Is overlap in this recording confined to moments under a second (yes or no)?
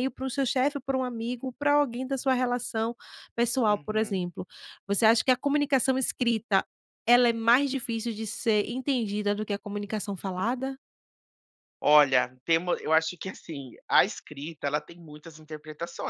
yes